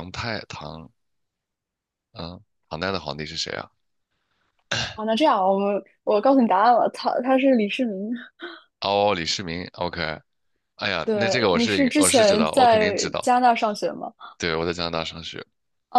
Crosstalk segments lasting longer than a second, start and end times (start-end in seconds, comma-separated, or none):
11.0-13.3